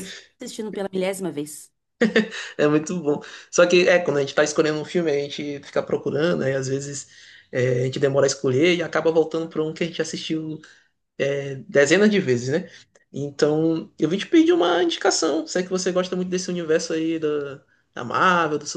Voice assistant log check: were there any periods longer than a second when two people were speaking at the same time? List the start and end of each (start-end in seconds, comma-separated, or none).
none